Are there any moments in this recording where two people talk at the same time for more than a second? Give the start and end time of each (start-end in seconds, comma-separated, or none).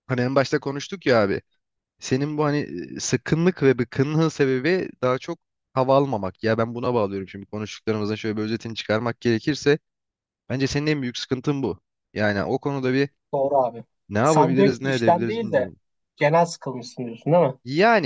14.2-15.7